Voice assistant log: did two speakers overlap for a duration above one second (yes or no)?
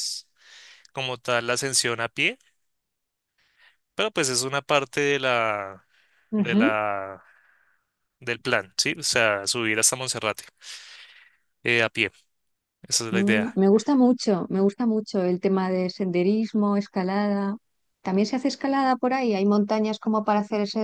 no